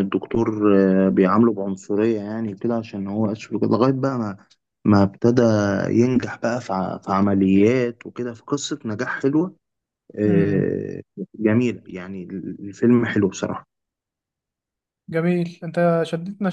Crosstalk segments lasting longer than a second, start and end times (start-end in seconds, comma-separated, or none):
none